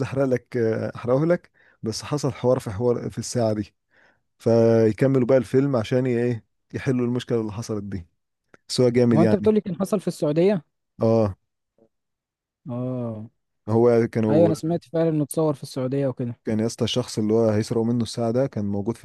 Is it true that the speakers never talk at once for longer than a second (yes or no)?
yes